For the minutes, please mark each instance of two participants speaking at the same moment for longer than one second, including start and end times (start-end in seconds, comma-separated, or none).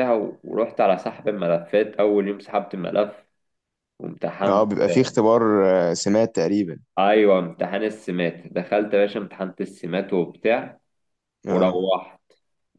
none